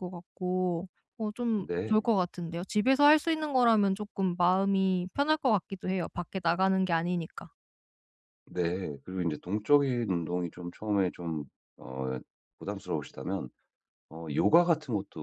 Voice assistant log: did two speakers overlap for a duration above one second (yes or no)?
no